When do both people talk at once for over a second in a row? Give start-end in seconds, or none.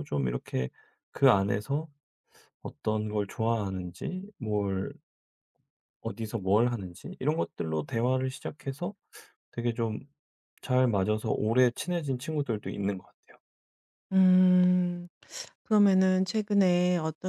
none